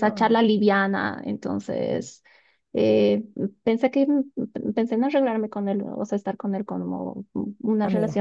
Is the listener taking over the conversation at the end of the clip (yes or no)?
no